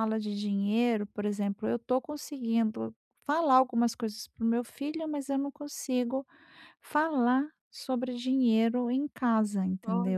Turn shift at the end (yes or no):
yes